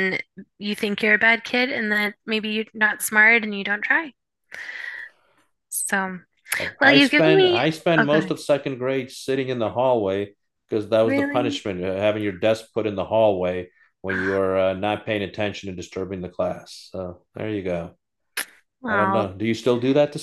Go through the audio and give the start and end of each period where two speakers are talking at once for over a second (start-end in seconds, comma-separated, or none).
6.8-8.3